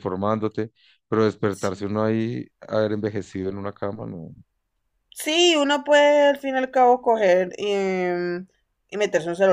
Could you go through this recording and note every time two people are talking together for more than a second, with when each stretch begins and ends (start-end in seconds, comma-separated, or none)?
none